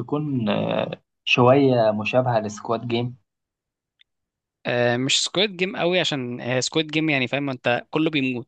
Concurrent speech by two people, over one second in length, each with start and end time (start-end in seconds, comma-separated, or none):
none